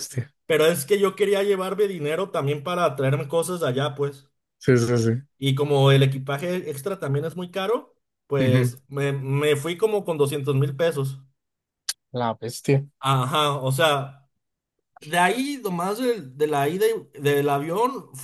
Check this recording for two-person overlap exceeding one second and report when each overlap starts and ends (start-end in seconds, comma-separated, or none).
none